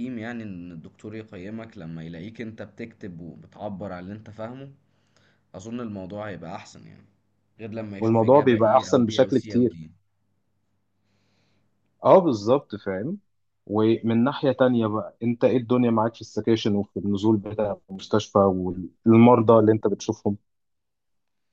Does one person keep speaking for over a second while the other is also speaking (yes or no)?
yes